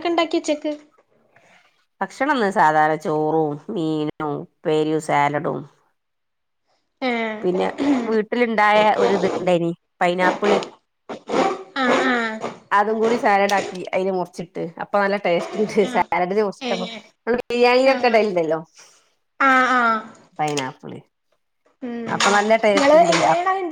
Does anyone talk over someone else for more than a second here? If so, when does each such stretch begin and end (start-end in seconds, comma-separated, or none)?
none